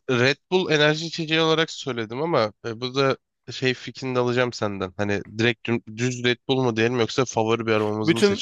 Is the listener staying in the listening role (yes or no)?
no